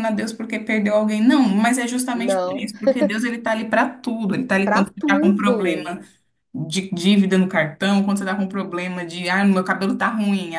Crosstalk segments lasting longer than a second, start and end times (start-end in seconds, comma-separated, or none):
4.6-5.9